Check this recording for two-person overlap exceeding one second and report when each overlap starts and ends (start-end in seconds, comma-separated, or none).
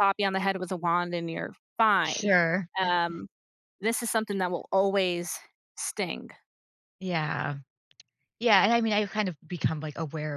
none